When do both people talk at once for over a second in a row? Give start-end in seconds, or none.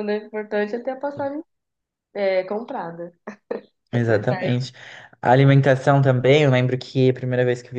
none